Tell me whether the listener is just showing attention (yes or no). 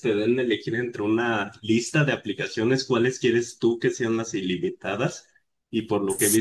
yes